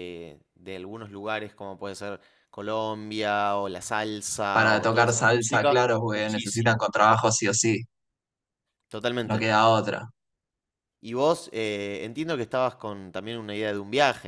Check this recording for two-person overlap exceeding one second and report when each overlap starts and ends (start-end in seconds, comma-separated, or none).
4.5-6.9